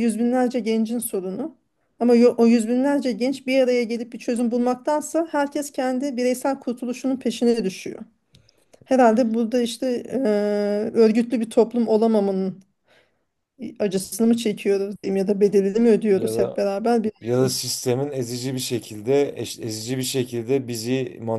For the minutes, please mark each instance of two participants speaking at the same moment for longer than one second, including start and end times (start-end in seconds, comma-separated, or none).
none